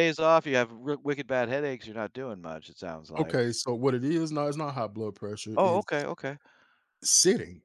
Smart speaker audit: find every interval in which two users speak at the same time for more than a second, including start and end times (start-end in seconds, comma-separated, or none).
none